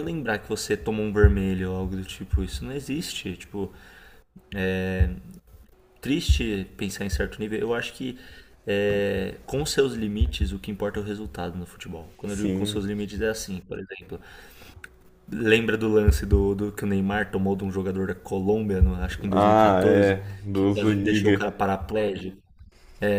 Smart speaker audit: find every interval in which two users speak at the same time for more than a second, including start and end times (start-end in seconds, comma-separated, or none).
19.3-21.5